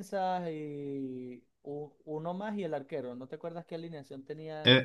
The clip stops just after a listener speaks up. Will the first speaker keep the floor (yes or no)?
no